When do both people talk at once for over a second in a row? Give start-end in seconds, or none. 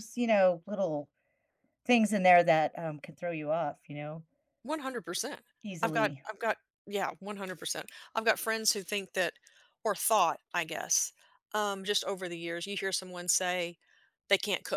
none